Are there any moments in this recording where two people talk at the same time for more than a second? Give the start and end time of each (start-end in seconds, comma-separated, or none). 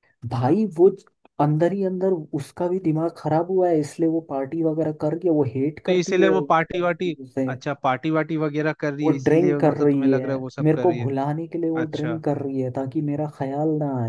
9.0-11.1